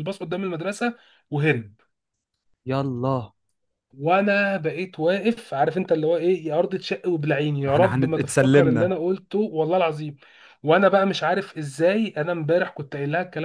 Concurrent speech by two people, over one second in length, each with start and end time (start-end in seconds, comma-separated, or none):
7.7-8.9